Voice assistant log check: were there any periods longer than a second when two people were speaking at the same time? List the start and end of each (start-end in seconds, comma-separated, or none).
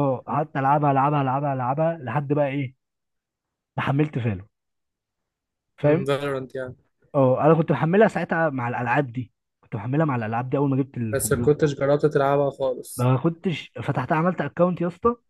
none